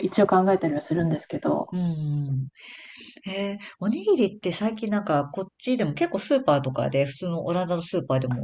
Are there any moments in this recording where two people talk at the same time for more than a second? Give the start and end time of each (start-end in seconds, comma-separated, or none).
none